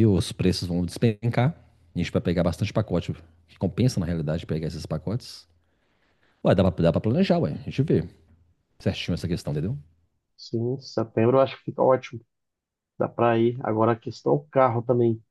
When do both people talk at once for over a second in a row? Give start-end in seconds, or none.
none